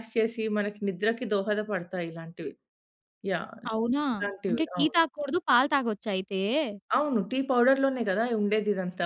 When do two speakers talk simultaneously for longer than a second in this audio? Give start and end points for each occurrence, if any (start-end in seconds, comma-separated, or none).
none